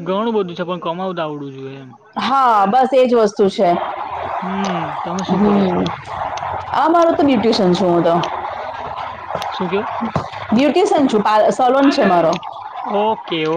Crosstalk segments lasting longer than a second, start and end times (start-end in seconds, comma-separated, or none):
none